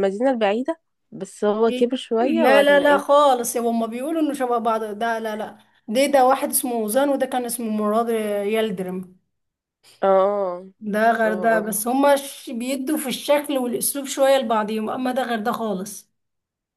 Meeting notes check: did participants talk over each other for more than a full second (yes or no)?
yes